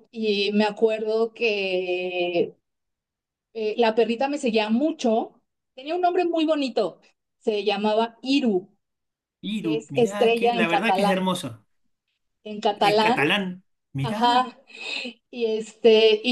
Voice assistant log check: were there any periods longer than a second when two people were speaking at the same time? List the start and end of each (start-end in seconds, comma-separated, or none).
9.6-11.4